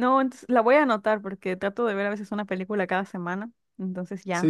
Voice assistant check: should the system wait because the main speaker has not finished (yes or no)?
no